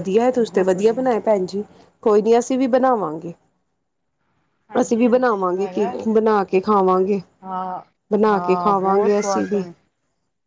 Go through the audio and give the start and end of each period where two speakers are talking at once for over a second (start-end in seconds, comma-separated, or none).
8.3-9.6